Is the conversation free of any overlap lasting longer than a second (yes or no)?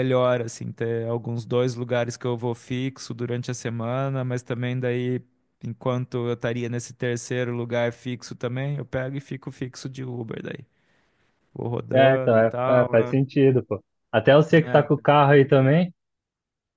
no